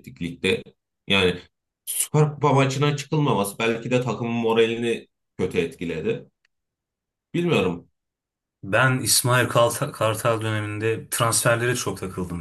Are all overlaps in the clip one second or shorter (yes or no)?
yes